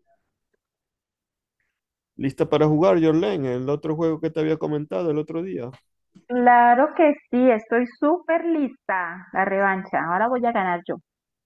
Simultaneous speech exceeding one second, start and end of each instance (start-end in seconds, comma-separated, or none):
none